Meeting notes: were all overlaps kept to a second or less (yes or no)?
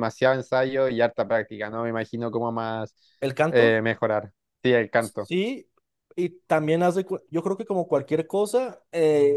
yes